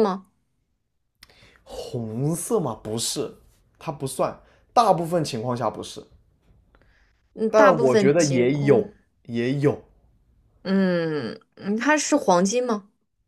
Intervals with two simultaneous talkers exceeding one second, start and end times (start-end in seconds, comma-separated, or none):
7.5-8.9